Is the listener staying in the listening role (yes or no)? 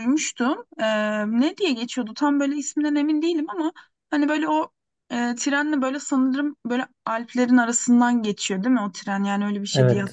no